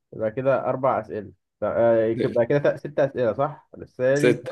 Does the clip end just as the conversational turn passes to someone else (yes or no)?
no